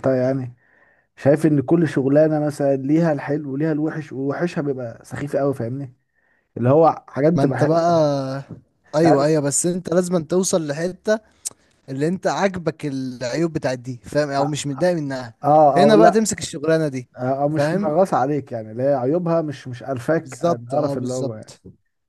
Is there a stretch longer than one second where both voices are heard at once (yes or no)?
yes